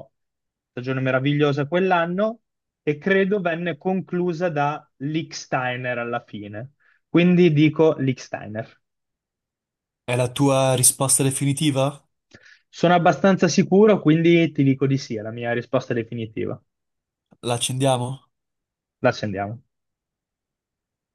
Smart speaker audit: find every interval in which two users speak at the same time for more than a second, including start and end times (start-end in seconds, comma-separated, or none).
none